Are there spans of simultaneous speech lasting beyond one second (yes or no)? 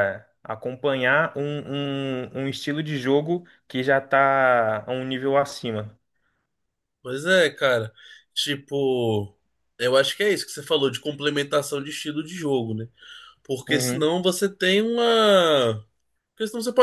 no